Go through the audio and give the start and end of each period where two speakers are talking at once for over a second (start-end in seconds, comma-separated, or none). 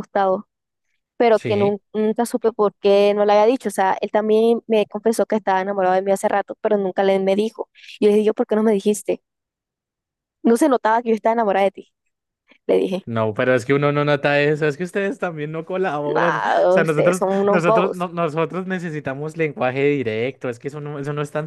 16.1-18.1